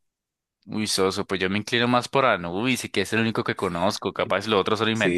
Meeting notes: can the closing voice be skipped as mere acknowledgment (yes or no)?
no